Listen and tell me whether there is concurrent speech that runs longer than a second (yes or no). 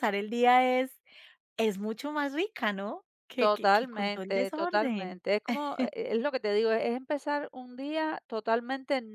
yes